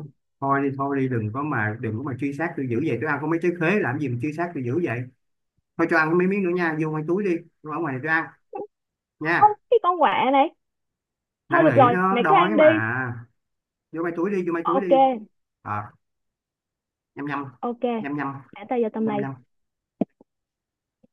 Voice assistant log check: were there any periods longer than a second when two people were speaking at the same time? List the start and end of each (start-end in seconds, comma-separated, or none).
11.5-12.8